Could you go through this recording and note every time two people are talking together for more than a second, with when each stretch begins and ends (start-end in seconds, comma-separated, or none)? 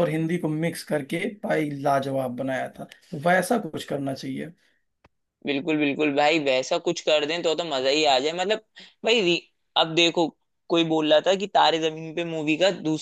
none